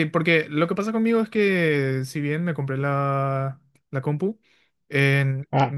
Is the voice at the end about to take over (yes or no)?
no